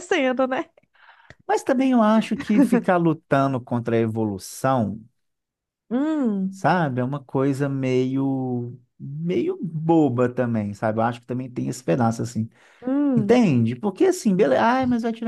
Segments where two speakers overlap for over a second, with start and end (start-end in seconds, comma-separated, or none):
none